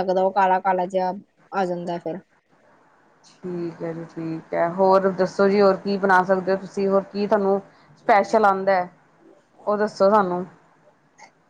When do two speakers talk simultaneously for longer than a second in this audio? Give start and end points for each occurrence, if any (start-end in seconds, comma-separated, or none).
none